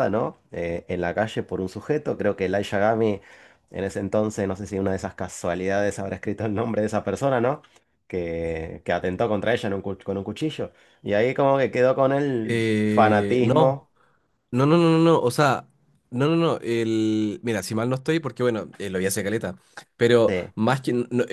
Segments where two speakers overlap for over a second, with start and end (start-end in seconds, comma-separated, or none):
12.4-13.8